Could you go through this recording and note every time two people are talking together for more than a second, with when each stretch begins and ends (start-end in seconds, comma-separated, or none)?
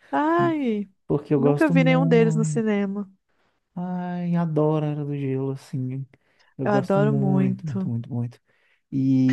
1.3-2.6, 6.6-7.9